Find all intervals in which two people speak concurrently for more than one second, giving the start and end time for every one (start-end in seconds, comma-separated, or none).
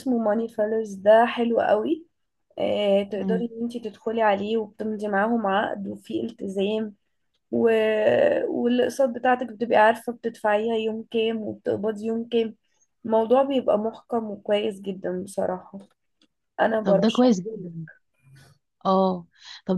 none